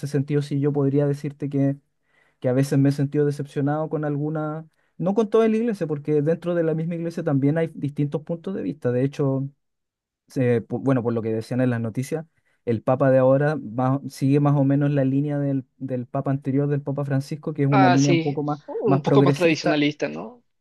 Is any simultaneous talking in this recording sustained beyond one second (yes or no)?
yes